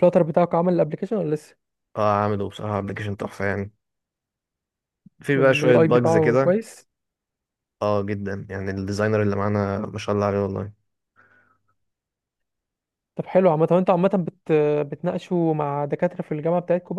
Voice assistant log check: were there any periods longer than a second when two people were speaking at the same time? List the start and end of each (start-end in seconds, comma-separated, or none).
5.3-6.6